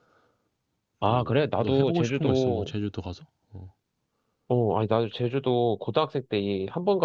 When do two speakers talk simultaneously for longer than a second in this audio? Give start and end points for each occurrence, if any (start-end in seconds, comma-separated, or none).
1.1-2.7